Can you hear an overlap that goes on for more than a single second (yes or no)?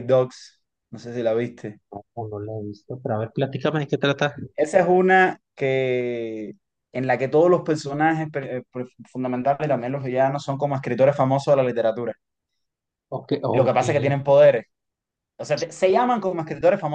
no